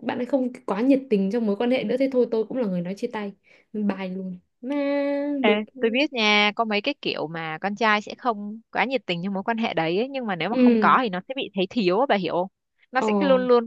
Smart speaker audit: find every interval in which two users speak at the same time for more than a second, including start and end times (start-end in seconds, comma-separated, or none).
none